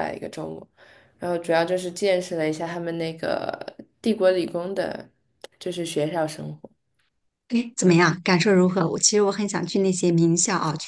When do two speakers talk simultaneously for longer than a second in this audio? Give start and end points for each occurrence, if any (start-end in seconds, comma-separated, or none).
none